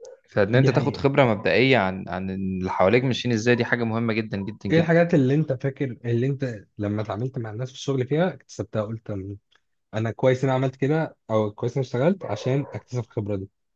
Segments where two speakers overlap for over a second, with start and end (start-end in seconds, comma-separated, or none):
none